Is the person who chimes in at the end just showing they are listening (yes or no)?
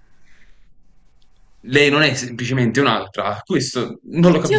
no